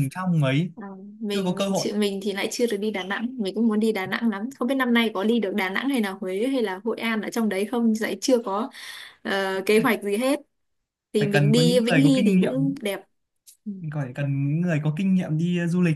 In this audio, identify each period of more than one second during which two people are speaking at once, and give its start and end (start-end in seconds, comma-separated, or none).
11.2-12.5